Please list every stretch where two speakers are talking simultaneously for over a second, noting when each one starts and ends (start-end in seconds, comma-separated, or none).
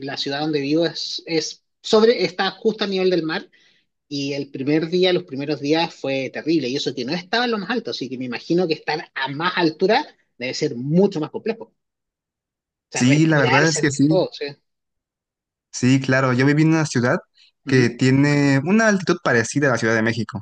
12.9-14.2